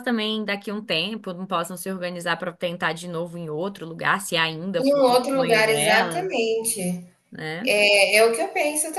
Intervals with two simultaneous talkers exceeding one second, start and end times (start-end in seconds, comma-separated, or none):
4.8-6.3